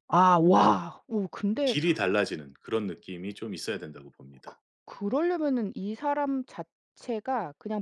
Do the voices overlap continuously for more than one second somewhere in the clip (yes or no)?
no